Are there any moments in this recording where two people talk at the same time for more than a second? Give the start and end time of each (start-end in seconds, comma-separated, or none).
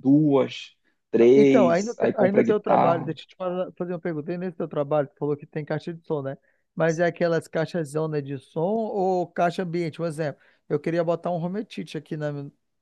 1.3-3.1